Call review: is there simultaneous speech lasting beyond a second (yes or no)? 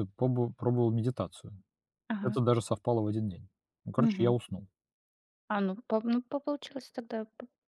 no